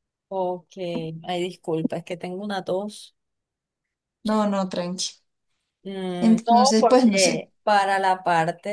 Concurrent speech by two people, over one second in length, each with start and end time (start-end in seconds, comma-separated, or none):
6.2-7.5